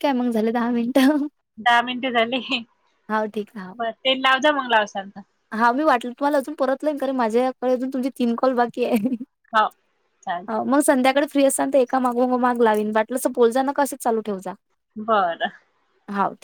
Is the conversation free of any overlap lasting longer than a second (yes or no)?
yes